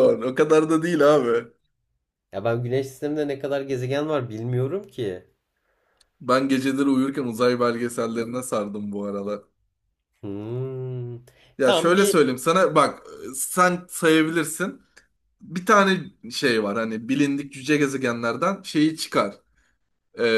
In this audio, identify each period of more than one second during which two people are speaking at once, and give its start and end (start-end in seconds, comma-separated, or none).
none